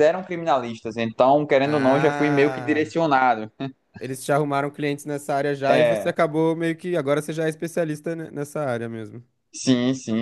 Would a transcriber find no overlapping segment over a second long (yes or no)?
no